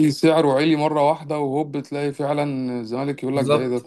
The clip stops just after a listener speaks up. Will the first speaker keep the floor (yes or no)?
no